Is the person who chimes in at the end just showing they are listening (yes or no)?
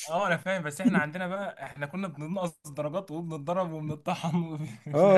no